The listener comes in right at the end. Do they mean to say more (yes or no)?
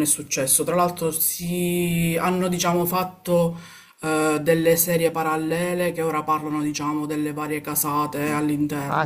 yes